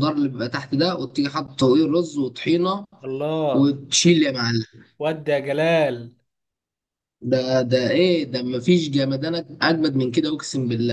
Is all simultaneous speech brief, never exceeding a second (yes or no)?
yes